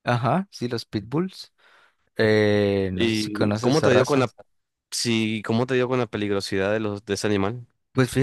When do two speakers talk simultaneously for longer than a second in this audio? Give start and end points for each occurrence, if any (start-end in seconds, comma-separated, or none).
2.9-4.3